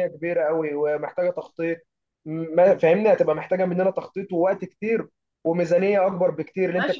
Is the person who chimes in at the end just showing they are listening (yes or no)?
no